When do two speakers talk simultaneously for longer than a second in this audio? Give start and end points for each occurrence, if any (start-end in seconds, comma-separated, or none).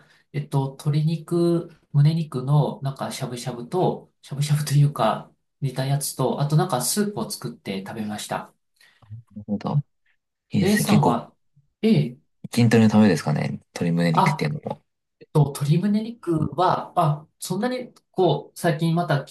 none